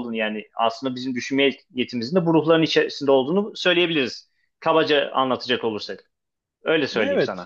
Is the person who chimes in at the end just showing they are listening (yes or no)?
no